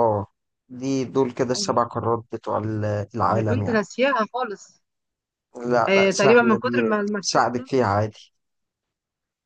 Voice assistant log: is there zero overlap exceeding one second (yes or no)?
no